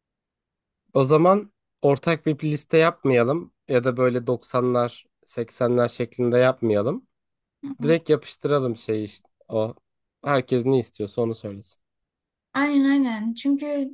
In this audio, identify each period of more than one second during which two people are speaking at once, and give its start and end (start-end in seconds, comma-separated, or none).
none